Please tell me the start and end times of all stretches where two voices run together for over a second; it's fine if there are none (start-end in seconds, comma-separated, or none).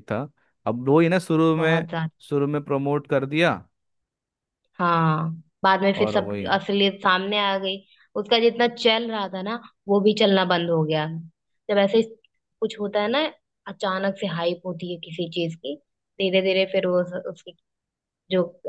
none